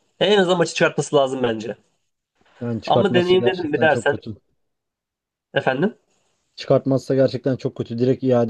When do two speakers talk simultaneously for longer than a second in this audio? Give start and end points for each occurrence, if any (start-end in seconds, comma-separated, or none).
2.9-4.2